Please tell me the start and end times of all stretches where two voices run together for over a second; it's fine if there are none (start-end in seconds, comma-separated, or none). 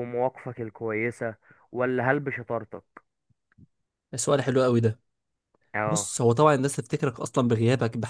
none